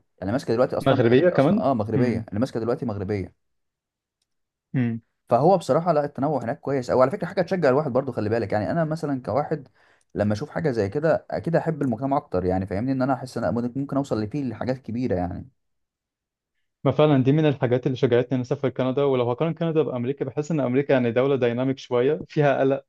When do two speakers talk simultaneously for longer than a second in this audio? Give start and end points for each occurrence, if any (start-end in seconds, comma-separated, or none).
0.8-2.2